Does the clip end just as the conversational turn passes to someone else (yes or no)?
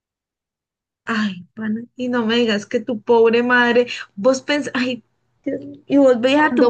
no